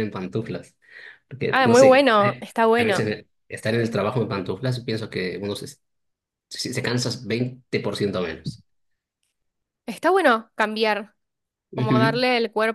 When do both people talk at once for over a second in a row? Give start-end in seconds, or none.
1.5-3.1